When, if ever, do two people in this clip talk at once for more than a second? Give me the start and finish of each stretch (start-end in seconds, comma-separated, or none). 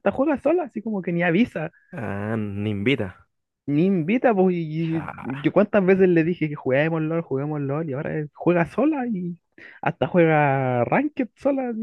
none